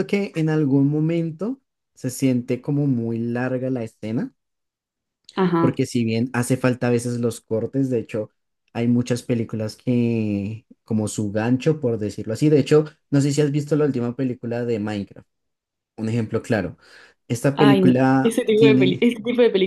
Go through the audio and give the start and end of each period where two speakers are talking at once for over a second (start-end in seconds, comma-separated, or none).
17.5-19.1